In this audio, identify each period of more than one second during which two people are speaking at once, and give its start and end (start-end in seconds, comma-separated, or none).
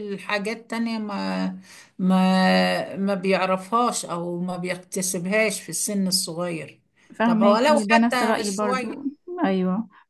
7.2-9.1